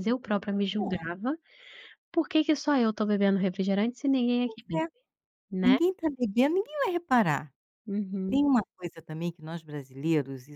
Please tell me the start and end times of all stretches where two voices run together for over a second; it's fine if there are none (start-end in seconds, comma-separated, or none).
none